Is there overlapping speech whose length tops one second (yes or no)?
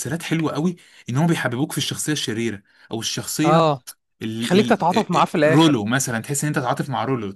yes